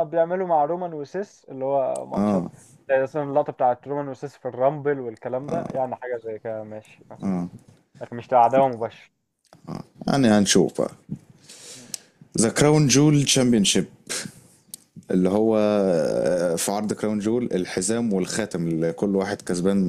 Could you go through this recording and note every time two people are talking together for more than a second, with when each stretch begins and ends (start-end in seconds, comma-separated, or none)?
none